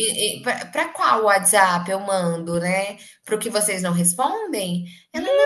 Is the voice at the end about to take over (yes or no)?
no